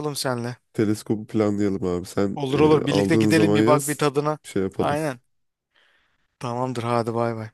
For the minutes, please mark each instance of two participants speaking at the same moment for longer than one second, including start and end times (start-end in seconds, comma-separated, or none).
2.3-4.0